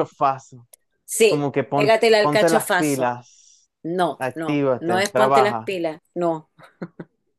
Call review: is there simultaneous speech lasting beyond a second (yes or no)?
yes